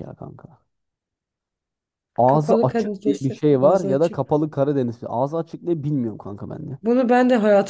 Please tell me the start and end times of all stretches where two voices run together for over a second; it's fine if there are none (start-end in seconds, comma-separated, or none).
2.3-4.4